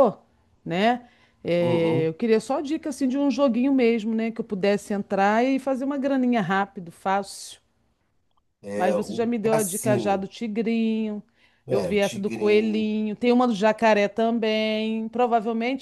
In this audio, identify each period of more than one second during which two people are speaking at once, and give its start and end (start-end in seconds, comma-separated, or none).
8.7-10.3, 11.7-12.9